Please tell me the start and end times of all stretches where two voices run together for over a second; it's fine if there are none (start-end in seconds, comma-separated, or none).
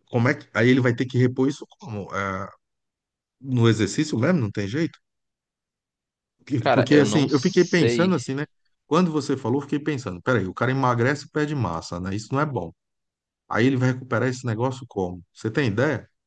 6.6-8.2